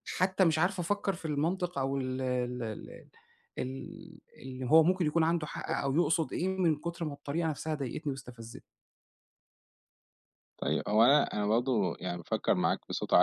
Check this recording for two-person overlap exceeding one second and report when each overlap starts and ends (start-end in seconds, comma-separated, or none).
none